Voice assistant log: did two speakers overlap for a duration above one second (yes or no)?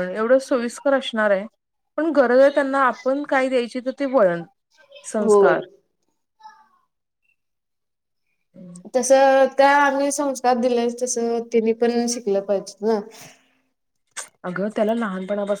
no